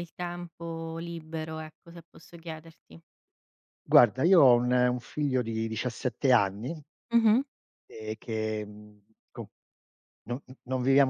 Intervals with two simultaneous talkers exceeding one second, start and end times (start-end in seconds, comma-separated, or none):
none